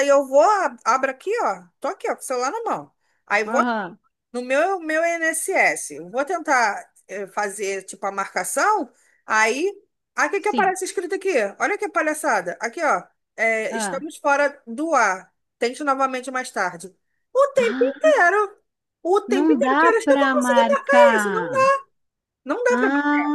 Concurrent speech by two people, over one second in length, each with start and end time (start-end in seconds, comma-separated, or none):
19.3-21.7